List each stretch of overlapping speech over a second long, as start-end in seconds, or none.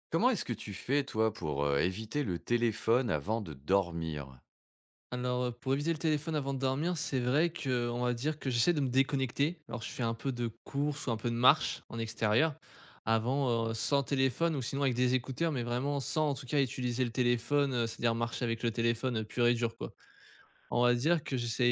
none